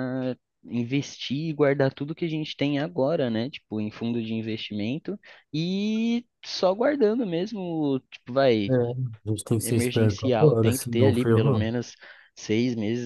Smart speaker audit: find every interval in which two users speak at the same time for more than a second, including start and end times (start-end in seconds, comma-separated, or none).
9.6-11.7